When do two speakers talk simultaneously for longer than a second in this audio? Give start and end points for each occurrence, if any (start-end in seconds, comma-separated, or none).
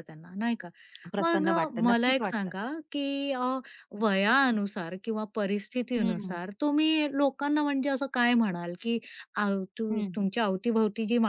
1.2-2.6